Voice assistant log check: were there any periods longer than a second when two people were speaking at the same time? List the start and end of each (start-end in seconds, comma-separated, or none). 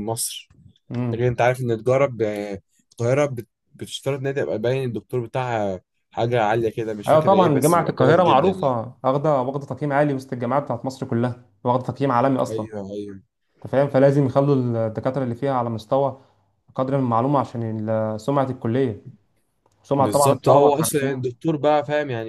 7.1-8.8, 20.0-21.3